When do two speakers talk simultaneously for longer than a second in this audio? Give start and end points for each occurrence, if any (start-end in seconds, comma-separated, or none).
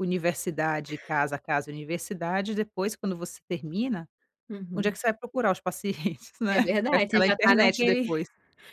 6.5-8.1